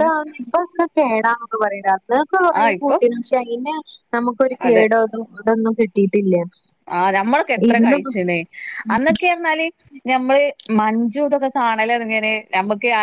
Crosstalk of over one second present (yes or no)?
no